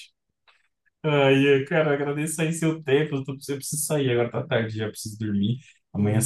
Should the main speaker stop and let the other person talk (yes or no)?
no